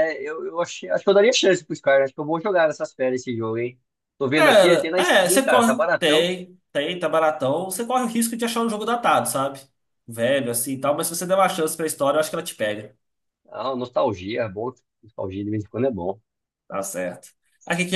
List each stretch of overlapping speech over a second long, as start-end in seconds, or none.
4.3-6.3